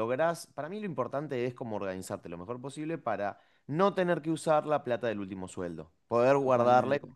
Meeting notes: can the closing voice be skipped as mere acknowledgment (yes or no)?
yes